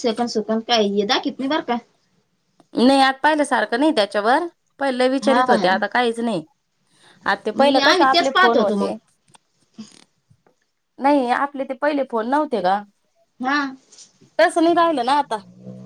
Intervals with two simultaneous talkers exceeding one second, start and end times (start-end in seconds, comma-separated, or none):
7.6-8.9